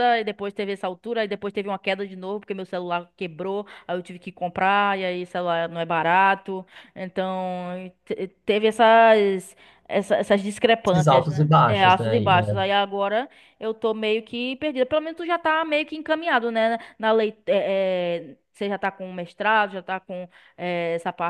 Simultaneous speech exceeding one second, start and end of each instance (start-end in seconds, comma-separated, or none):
10.9-12.6